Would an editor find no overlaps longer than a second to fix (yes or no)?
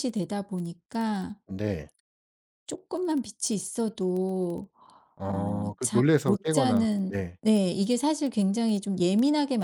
no